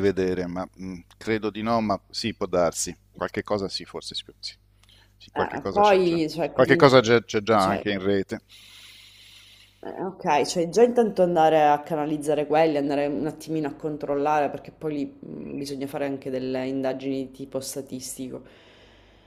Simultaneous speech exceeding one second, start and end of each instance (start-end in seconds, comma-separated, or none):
5.3-6.9